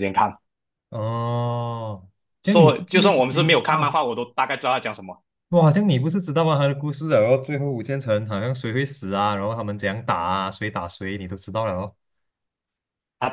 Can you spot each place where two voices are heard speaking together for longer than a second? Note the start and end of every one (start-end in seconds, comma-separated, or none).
2.4-3.9